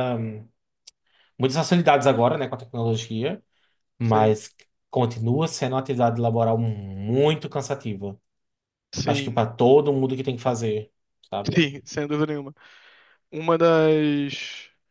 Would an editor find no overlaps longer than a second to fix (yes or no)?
yes